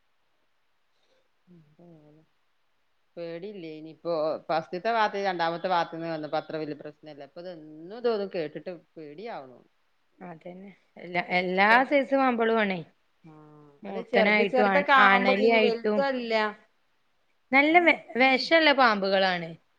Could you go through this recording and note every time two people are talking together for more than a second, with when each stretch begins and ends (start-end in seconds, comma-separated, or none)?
13.9-16.0